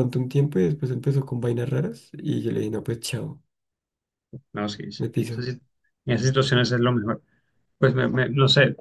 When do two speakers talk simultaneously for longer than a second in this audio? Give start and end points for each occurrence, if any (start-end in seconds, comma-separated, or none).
none